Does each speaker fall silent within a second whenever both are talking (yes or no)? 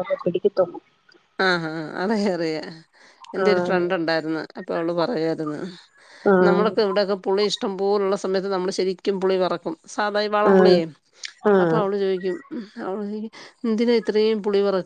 yes